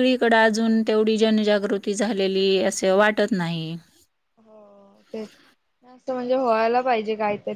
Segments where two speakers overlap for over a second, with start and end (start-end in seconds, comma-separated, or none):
none